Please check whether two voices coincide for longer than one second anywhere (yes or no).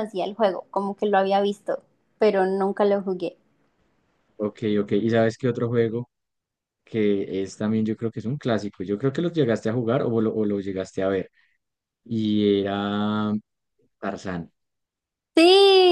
no